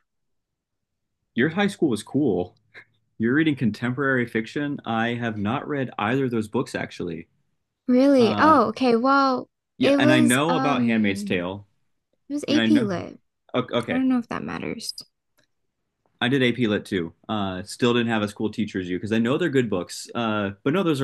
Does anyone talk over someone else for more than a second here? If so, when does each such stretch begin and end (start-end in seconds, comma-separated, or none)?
9.8-11.4